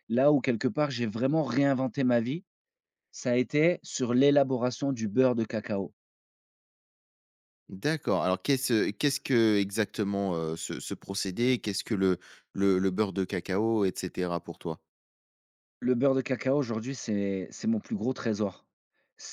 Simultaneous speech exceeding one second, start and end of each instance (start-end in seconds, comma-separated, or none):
none